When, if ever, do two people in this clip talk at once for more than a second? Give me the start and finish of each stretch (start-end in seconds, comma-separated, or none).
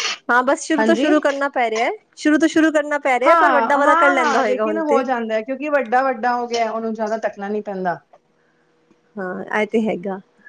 3.2-5.0